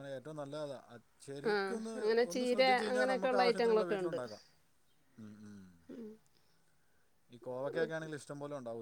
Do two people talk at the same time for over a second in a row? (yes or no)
yes